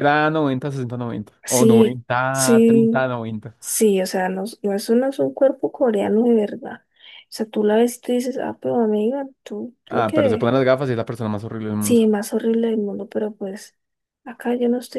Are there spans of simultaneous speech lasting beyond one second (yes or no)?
yes